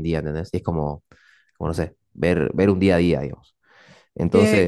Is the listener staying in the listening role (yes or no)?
no